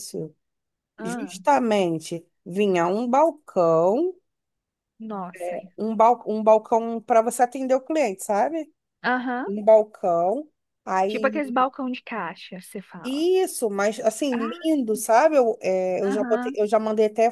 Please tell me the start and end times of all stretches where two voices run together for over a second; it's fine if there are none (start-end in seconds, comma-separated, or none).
none